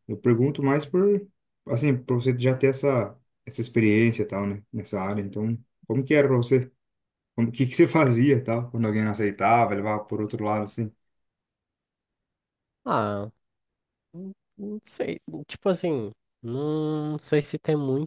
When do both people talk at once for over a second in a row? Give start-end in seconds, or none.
none